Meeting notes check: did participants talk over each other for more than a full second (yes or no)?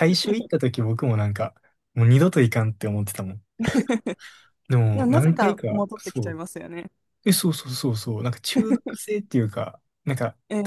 yes